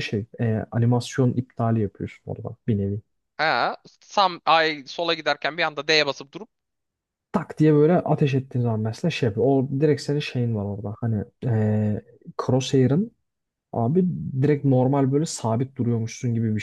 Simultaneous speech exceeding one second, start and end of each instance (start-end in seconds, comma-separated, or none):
none